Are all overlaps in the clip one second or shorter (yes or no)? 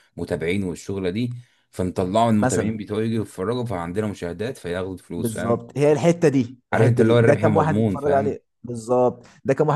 no